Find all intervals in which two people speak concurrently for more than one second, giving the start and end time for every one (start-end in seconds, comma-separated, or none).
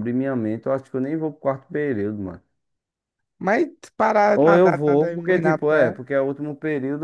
4.3-5.9